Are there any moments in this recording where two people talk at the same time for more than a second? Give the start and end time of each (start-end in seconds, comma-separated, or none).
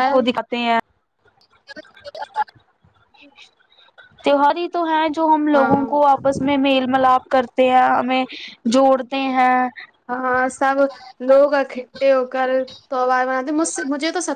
none